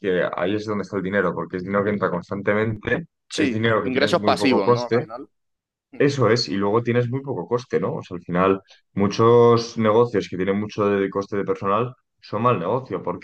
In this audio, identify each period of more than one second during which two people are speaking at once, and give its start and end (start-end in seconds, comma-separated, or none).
3.3-5.0